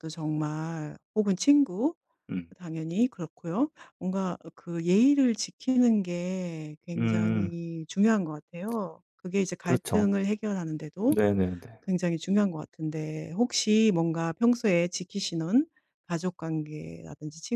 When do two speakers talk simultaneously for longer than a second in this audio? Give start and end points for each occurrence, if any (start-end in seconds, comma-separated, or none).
none